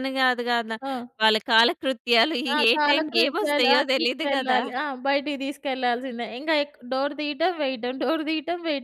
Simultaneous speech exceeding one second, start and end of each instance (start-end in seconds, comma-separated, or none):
2.5-4.6